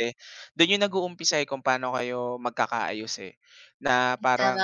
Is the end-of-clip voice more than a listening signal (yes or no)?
no